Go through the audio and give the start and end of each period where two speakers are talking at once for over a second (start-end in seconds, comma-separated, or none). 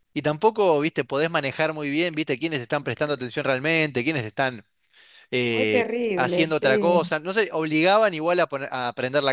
5.5-7.0